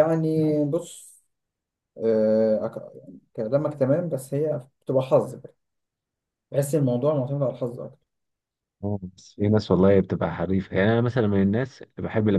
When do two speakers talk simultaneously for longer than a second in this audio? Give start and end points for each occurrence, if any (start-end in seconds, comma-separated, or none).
none